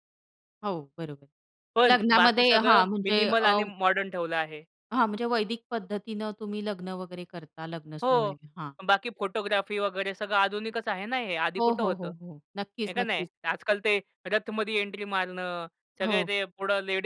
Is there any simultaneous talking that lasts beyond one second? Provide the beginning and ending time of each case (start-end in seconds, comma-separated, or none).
1.9-3.5